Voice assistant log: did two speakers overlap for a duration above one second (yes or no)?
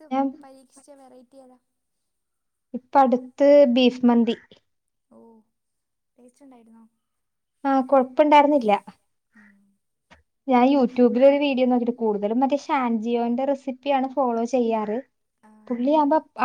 no